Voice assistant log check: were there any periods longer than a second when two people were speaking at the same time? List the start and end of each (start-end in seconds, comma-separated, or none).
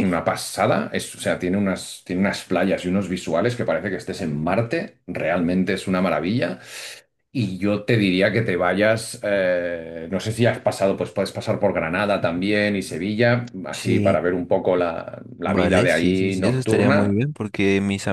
15.4-17.2